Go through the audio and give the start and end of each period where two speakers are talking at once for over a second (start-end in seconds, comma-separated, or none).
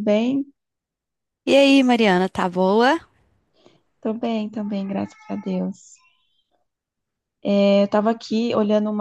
none